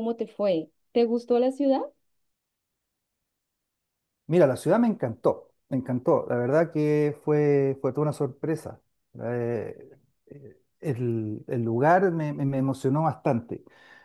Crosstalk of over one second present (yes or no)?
no